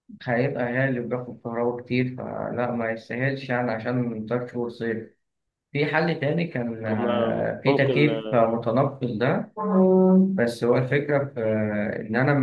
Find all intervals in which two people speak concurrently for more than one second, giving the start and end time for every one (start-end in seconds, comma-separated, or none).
6.8-8.5